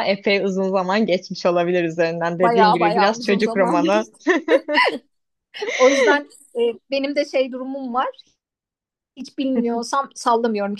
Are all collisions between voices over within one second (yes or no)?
no